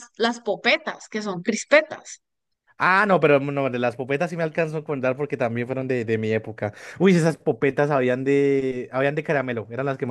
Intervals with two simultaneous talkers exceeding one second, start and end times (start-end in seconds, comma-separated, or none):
none